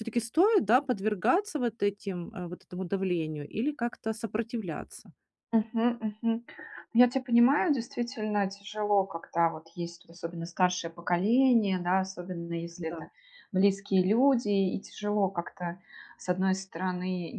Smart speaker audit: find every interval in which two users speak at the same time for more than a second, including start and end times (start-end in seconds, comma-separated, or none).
none